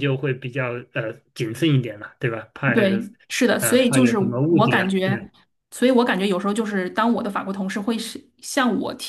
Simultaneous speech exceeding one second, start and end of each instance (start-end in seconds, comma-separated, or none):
3.6-5.3